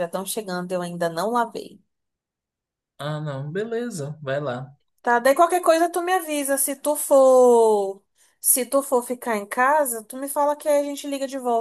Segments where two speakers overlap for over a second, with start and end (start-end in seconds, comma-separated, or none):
none